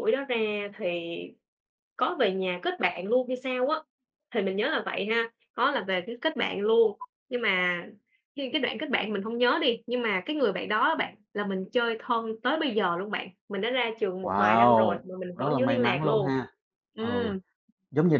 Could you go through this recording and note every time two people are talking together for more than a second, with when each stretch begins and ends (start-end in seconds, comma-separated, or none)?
14.2-16.4